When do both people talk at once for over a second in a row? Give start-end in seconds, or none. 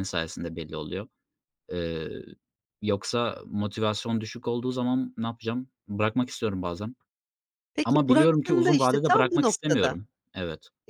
7.8-10.1